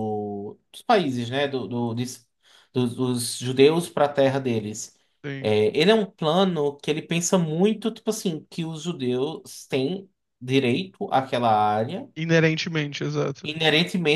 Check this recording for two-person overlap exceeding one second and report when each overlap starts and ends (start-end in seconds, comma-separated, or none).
none